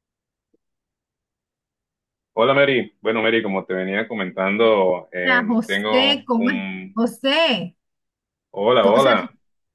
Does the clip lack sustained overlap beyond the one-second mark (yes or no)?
no